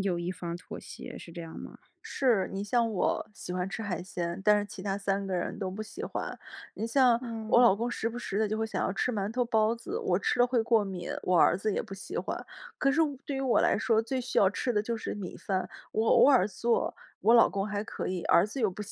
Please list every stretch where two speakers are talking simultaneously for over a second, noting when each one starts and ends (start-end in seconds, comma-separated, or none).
none